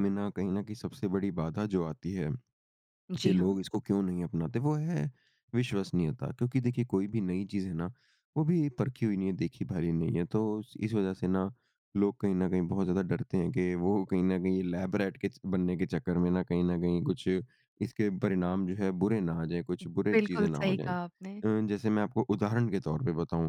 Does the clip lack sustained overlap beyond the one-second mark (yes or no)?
no